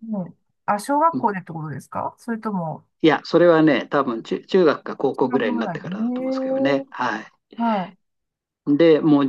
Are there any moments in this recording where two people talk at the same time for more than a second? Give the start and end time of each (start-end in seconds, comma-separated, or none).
5.2-6.6